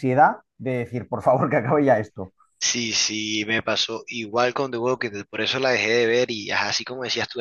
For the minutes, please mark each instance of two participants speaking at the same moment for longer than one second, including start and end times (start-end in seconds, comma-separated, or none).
none